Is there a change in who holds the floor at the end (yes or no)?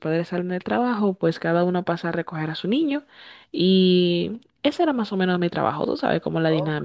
yes